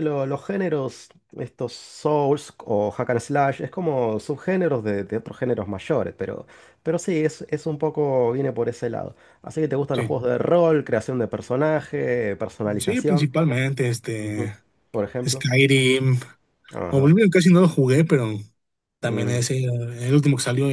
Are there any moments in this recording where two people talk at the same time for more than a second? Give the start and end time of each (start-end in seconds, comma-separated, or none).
none